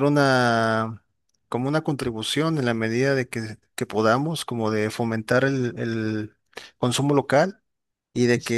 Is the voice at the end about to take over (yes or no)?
no